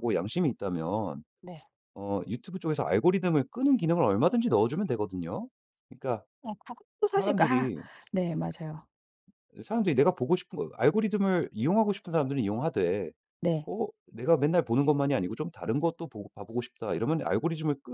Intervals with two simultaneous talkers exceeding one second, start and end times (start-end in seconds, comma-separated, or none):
none